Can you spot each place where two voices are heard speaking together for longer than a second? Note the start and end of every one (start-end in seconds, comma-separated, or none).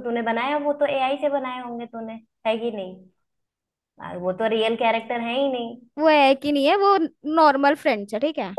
none